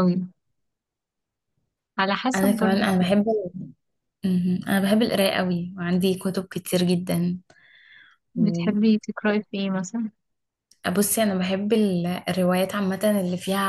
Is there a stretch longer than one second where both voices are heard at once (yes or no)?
no